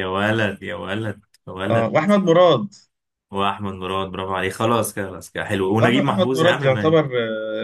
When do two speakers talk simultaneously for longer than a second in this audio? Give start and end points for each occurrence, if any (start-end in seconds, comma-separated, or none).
5.8-7.0